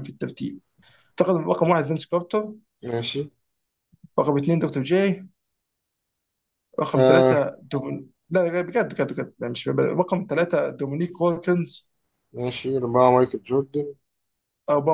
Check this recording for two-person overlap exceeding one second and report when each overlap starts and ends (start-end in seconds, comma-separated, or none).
none